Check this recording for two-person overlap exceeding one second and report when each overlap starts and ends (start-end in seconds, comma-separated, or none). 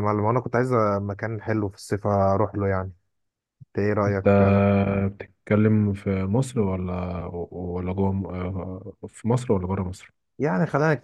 none